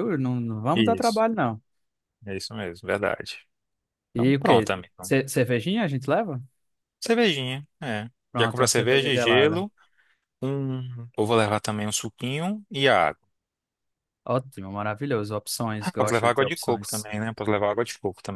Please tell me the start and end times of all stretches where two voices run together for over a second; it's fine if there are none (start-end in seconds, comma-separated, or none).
8.3-9.6, 15.8-17.1